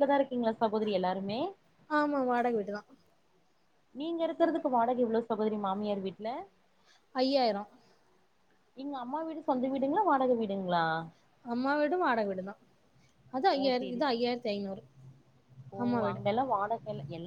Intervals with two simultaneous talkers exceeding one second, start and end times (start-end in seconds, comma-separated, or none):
none